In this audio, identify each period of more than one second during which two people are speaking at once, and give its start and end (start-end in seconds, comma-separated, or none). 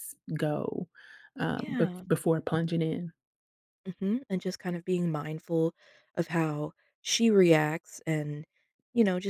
none